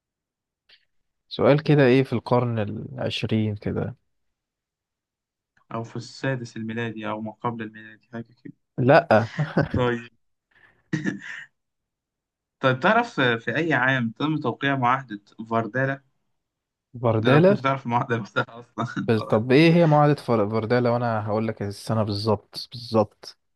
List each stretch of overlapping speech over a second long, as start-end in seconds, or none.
none